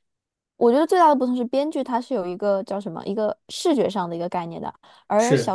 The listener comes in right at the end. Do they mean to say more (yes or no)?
no